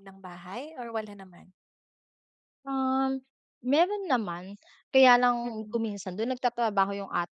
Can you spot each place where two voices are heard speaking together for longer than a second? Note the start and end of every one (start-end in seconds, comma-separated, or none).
none